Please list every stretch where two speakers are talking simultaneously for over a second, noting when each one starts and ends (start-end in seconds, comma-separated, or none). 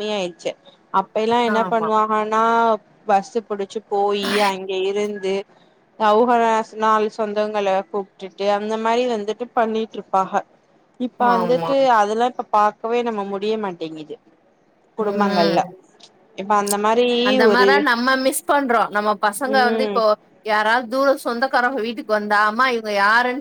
none